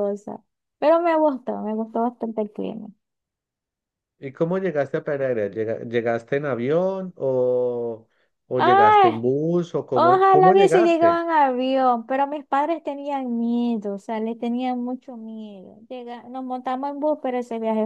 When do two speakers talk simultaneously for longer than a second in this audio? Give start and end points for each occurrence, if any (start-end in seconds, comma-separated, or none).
9.9-11.2